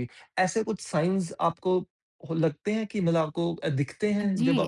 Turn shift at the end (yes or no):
yes